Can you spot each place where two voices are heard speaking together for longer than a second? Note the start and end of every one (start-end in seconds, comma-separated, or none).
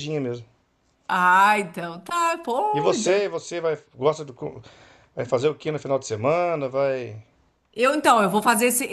none